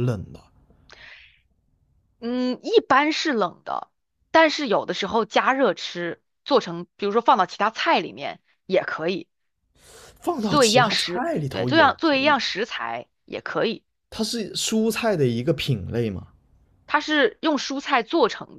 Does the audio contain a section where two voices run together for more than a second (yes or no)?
yes